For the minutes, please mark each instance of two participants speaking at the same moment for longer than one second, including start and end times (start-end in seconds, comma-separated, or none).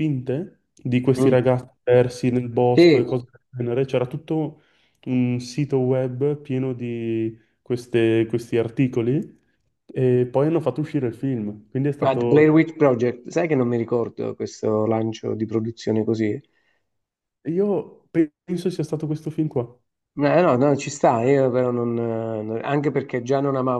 none